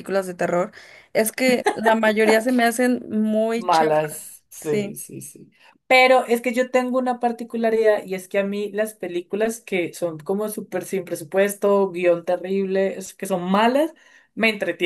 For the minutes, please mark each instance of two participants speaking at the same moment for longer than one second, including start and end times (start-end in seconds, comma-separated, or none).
3.5-5.0